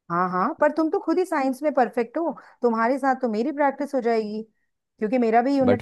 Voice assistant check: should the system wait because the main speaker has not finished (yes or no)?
yes